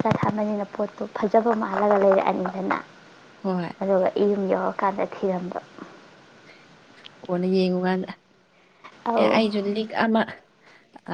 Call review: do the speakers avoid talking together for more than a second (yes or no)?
yes